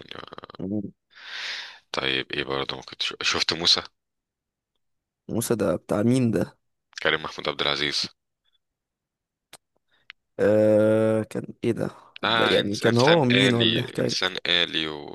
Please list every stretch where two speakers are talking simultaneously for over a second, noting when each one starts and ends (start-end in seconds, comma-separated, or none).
12.2-14.2